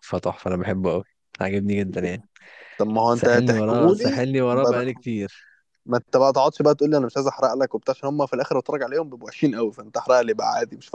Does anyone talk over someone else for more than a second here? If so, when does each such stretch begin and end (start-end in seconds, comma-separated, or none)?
3.1-4.9